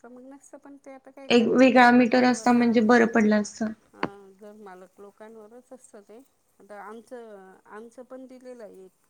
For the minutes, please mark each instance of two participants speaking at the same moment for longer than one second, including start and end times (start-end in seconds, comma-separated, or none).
1.3-2.7